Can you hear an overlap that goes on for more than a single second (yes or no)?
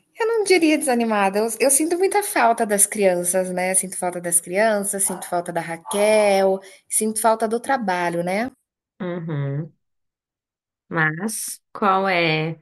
no